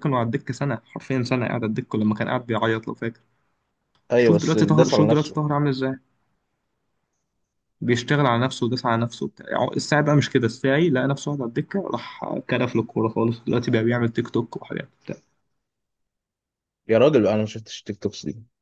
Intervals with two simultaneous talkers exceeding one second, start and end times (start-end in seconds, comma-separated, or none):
4.2-5.4